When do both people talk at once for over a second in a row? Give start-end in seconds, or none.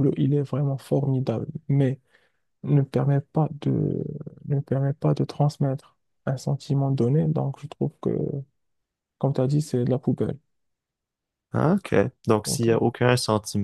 none